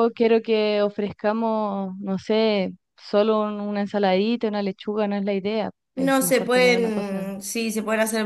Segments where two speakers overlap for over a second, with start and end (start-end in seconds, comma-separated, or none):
6.0-7.3